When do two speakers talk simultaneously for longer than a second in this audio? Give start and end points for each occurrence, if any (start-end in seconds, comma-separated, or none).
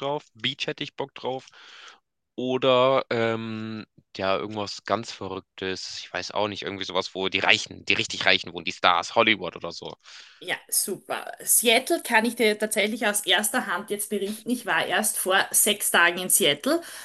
none